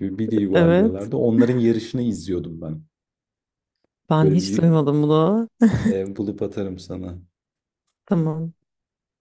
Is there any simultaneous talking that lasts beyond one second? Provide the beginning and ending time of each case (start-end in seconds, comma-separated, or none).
none